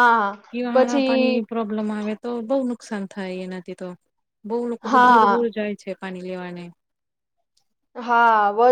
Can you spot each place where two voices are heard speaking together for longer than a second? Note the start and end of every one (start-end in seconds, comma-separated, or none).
none